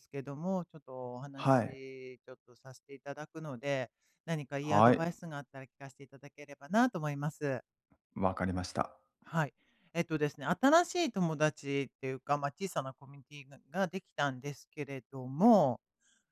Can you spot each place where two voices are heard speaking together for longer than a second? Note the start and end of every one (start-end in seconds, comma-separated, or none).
none